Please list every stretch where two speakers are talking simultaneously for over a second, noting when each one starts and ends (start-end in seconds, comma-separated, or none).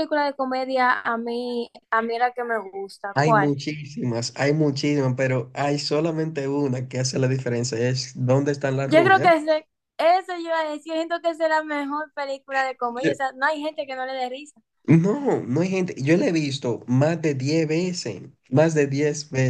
none